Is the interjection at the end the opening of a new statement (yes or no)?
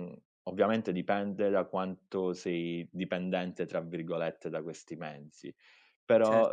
no